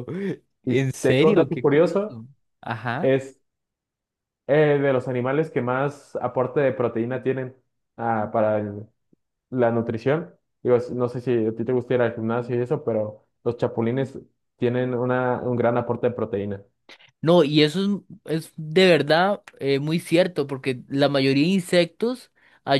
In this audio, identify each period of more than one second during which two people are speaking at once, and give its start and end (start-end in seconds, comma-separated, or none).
0.6-2.2